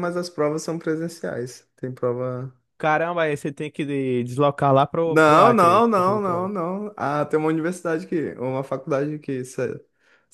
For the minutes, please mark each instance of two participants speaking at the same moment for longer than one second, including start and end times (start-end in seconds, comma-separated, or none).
5.0-6.5